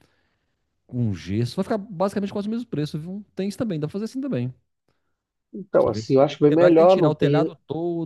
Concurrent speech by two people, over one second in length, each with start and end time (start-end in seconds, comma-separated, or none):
5.7-7.5